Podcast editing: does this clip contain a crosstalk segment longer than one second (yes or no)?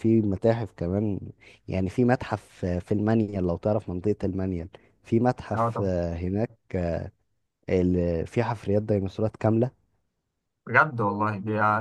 no